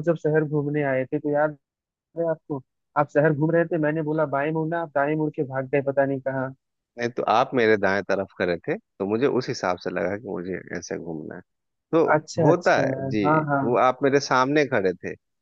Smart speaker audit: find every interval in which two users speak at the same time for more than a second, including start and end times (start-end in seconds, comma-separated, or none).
none